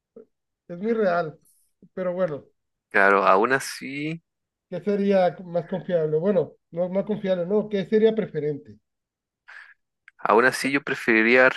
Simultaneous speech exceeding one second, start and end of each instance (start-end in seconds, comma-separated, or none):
none